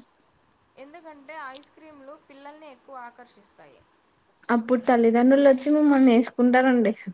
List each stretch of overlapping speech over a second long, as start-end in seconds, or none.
none